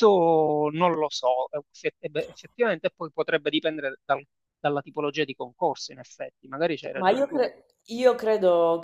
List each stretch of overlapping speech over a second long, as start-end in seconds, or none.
none